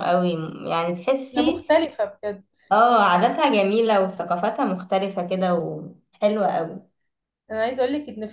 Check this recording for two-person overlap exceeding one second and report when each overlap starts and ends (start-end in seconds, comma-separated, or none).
none